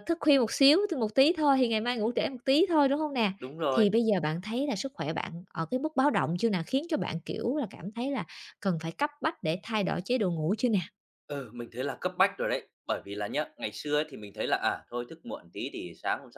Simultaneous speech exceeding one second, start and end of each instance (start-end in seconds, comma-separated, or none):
none